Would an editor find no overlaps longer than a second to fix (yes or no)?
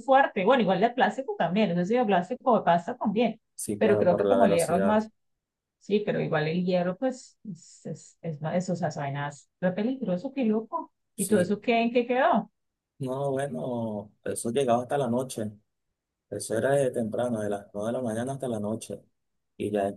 no